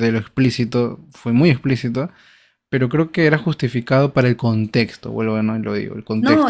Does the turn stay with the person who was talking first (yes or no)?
no